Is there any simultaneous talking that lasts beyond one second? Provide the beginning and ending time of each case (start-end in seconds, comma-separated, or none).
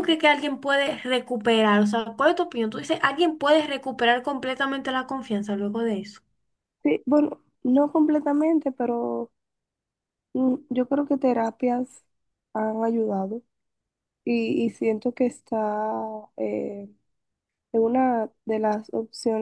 none